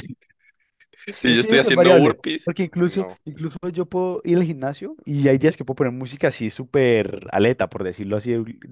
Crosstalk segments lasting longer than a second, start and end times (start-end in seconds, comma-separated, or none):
1.3-3.2